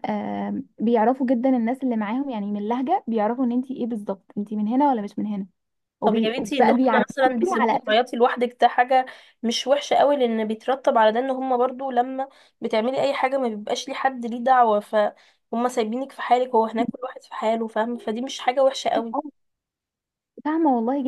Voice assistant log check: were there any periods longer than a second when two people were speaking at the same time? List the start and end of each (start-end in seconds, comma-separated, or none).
6.0-7.8